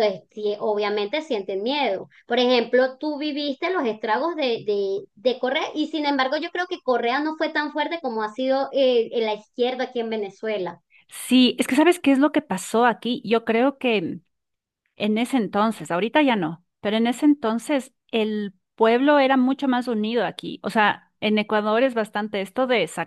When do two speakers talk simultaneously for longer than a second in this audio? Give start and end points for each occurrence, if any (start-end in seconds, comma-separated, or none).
none